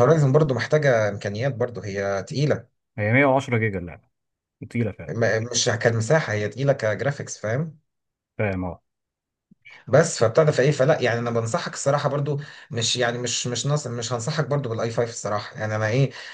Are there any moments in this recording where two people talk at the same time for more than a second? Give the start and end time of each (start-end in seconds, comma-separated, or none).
none